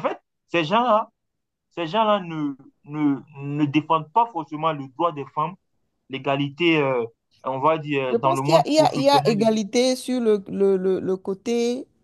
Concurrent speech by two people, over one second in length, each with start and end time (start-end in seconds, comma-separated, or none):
8.1-9.5